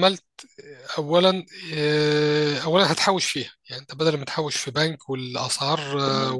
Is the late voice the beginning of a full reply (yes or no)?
no